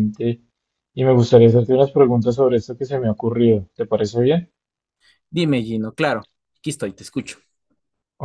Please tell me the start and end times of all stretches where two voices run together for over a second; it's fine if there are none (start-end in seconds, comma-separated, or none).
none